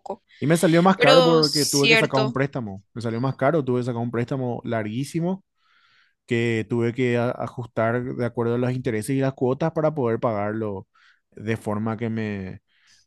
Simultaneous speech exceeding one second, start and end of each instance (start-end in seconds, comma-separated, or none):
0.9-2.4